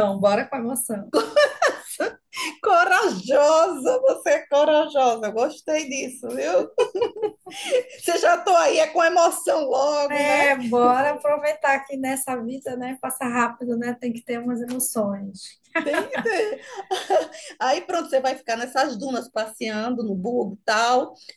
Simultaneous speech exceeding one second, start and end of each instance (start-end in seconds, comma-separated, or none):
none